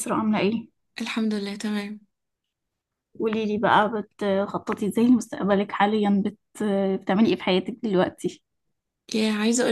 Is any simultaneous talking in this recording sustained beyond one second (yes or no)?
no